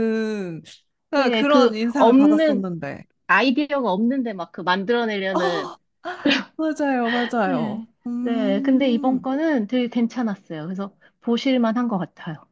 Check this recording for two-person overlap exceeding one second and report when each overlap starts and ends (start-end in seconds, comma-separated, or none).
1.1-2.7, 7.5-9.2